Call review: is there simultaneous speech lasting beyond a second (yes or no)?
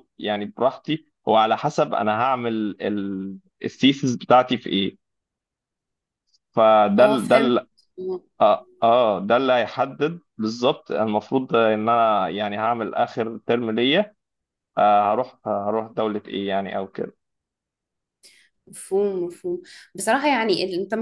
no